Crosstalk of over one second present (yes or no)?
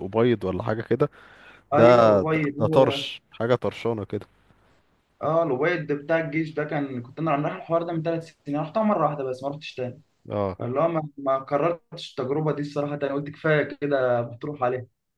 yes